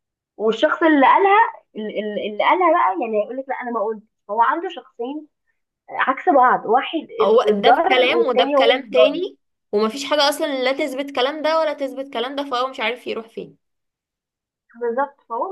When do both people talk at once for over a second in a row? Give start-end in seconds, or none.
7.5-9.2